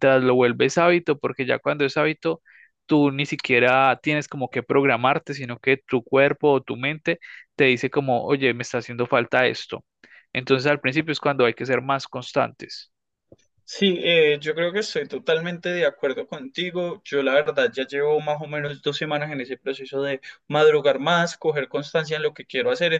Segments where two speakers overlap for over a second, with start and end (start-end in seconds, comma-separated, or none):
none